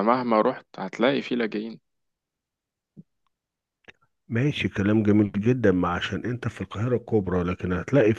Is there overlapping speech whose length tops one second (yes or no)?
no